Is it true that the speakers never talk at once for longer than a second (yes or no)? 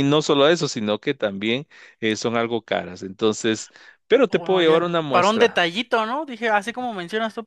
no